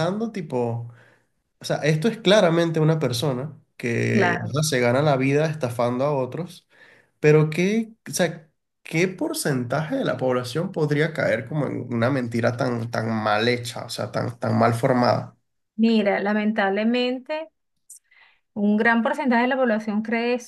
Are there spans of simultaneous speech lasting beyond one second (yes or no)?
no